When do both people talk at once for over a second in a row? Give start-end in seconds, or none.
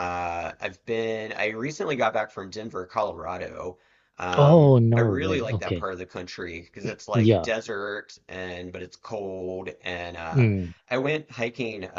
4.4-5.9